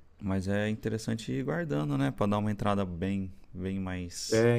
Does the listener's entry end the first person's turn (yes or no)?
yes